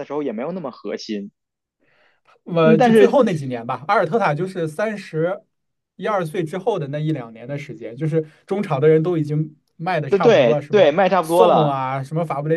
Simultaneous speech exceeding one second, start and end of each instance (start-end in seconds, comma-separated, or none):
10.1-11.7